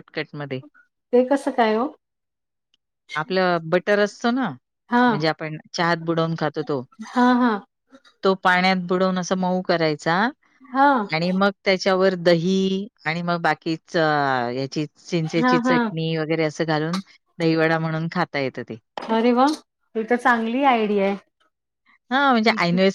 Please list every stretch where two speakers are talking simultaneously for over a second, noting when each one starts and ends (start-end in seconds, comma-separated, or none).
none